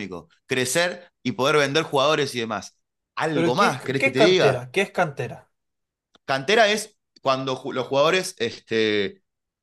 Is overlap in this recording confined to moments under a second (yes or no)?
no